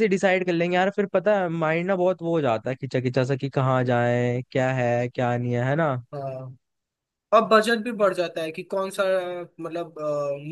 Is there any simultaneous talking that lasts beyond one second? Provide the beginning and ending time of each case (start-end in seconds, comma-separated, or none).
none